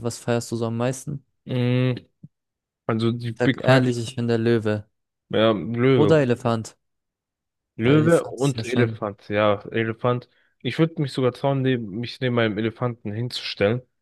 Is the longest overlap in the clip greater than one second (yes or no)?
yes